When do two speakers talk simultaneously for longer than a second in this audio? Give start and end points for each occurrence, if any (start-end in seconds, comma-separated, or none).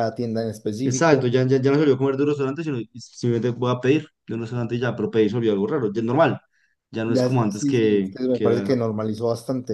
7.1-8.7